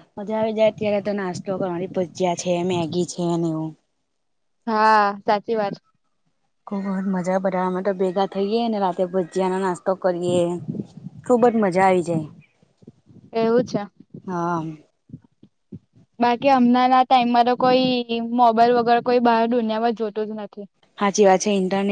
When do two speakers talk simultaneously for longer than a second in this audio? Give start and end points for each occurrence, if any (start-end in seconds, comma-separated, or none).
none